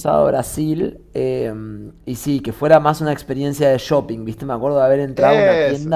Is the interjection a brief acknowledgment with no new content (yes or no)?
yes